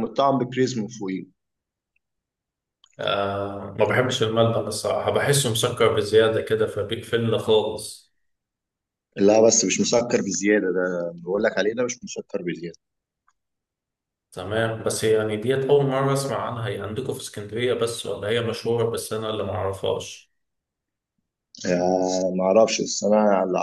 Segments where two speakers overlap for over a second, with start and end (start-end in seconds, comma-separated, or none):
none